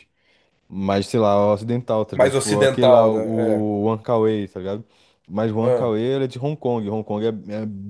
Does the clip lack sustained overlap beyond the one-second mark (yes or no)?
no